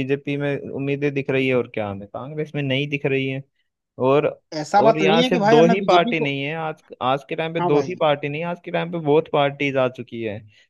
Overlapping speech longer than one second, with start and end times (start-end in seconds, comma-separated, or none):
4.8-6.3